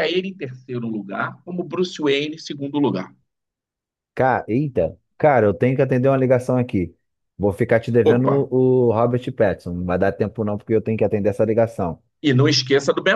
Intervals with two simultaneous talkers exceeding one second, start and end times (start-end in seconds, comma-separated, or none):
none